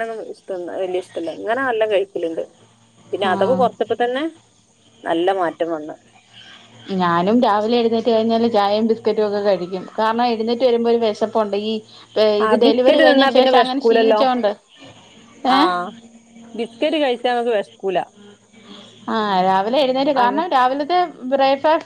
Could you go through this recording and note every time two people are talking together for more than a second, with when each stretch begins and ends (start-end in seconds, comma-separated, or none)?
12.4-14.2